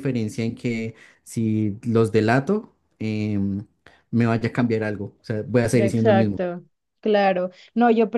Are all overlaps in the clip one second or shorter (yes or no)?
yes